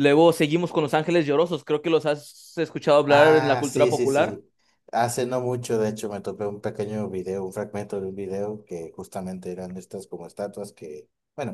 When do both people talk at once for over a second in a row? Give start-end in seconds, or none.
3.1-4.4